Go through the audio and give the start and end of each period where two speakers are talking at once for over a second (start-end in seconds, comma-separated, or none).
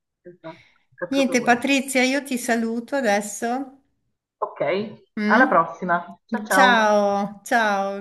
none